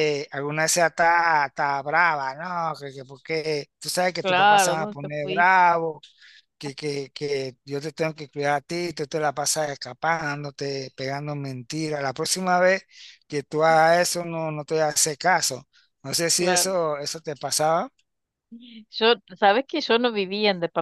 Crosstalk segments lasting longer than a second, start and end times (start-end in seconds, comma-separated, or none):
4.2-5.5